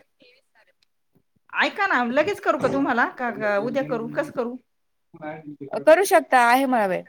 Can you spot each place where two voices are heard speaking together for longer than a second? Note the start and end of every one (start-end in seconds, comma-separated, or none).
none